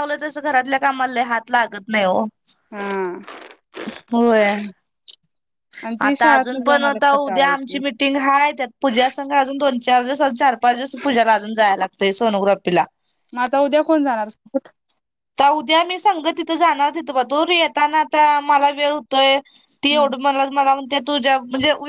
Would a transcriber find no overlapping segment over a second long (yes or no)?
no